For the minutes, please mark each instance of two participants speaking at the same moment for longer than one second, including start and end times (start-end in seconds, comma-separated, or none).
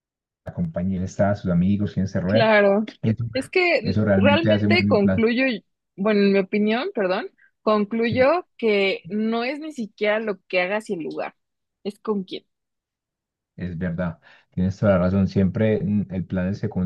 3.8-5.3